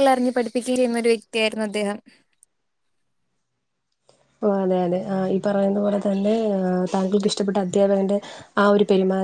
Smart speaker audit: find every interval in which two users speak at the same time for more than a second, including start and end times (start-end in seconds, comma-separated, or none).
none